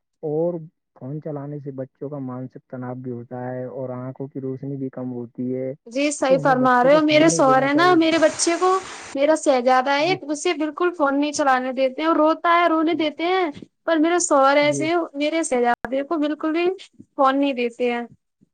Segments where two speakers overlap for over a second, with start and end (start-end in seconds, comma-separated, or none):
6.3-8.0